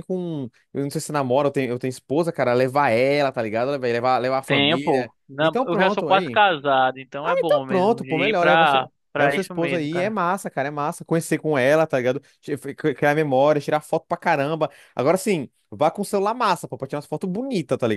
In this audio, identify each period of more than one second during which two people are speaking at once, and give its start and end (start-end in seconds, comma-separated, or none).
4.5-6.4, 7.2-10.1